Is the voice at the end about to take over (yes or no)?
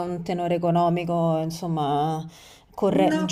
no